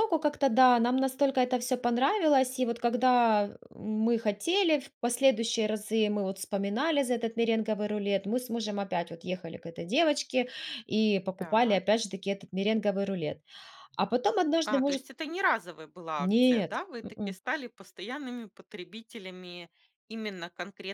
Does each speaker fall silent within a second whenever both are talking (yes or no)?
no